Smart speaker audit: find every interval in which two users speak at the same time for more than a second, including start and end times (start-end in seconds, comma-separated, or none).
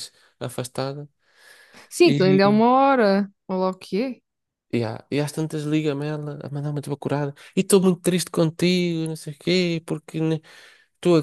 none